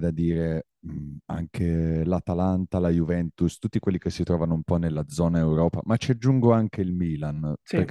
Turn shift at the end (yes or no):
no